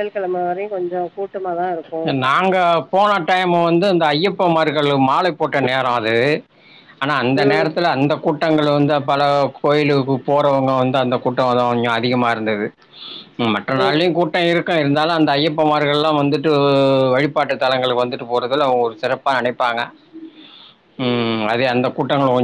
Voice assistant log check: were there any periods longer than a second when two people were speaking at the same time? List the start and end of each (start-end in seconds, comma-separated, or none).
none